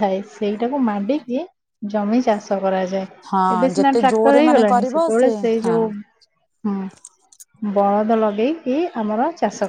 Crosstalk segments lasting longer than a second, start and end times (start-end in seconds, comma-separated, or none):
3.3-5.8